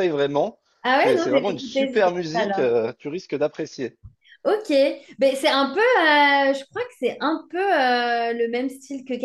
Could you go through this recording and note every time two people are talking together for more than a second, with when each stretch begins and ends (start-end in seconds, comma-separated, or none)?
1.0-2.7